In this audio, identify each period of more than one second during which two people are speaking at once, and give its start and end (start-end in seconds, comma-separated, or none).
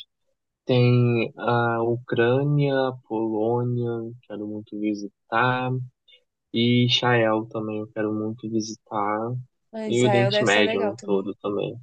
9.9-11.3